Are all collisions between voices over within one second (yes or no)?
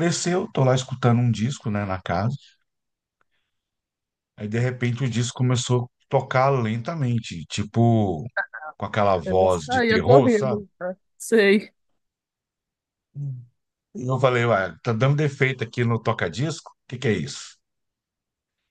no